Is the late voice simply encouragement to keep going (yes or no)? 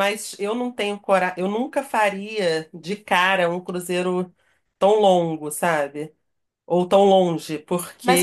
no